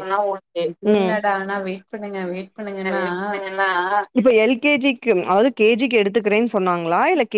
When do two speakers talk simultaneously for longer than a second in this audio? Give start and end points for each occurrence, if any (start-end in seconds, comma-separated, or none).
none